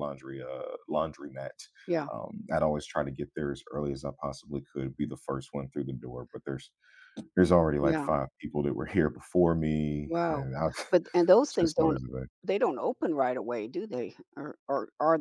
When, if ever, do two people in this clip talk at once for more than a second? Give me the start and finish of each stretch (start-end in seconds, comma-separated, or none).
none